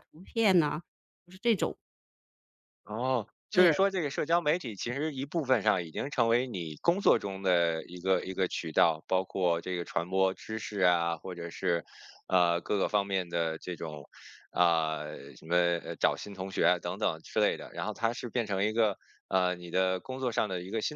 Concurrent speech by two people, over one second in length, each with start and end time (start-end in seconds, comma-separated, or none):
none